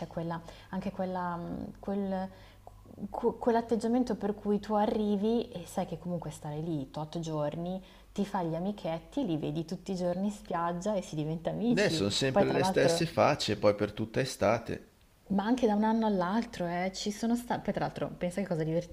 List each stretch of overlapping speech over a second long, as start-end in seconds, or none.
11.7-13.0